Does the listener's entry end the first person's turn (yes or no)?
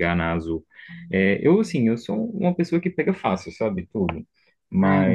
no